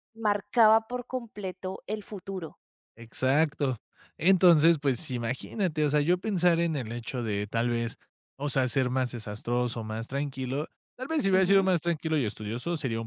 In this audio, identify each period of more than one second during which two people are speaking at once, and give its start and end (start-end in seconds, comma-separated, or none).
none